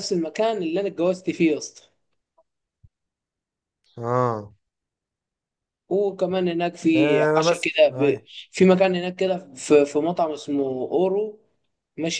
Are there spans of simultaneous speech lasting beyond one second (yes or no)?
yes